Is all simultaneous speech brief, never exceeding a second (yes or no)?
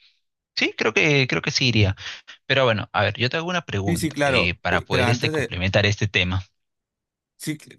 no